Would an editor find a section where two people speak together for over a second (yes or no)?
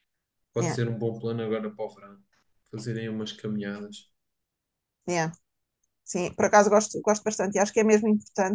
no